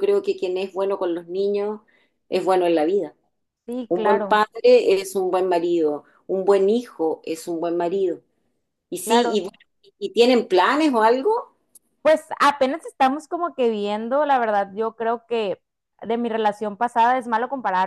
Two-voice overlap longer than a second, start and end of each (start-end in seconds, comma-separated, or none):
none